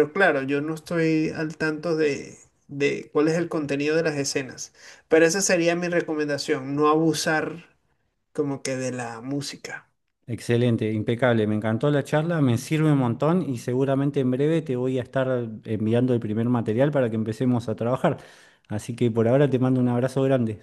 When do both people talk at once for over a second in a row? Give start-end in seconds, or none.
none